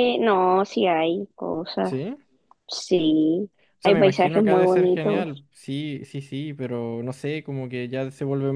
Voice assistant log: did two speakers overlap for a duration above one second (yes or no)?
yes